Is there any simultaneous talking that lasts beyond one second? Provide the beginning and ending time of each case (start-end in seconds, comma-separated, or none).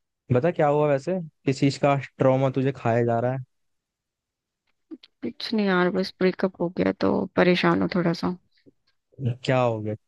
none